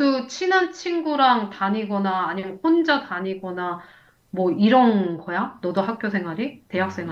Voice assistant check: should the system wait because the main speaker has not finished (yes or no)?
no